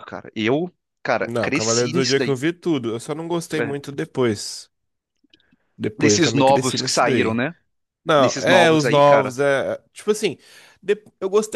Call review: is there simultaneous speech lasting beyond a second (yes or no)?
yes